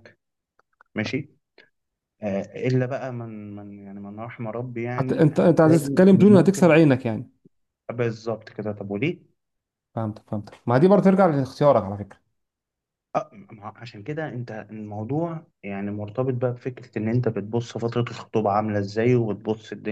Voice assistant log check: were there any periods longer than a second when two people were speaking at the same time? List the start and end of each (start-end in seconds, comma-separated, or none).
5.0-6.7